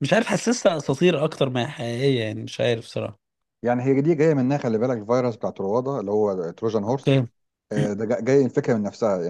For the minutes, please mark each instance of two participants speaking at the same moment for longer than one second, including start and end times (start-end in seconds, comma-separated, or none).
none